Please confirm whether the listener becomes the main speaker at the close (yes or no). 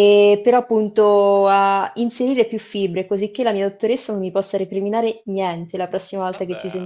yes